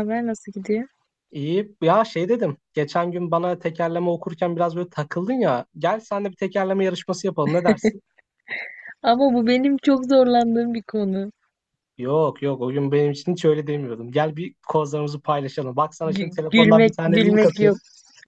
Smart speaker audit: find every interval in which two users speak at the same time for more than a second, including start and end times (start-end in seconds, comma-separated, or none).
16.0-17.8